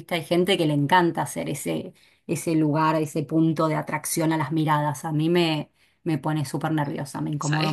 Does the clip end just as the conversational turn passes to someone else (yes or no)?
yes